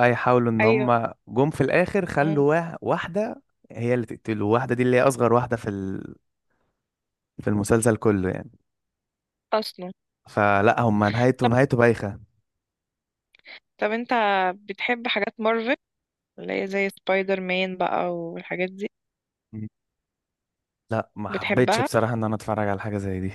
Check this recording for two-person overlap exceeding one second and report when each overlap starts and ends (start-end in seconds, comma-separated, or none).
none